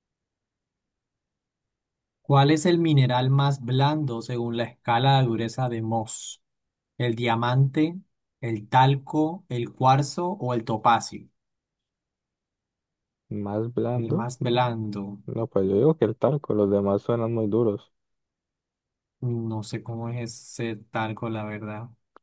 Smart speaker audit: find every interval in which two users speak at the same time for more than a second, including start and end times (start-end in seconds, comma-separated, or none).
none